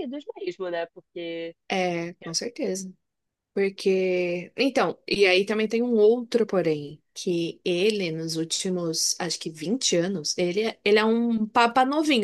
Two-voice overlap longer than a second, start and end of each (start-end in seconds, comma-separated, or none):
none